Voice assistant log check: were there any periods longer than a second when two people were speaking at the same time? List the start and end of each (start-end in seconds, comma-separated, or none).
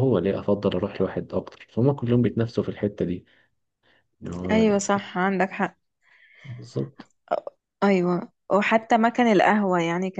none